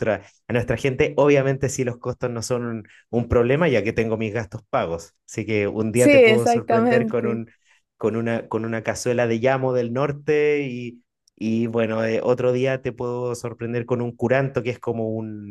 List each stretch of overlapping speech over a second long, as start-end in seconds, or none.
5.9-7.4